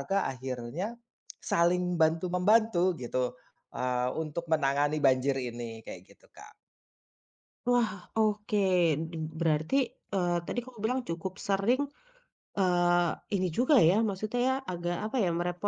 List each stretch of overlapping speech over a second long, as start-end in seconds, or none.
none